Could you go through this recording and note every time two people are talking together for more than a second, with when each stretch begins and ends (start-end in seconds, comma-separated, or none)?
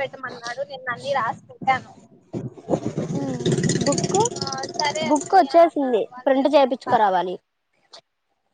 5.1-7.1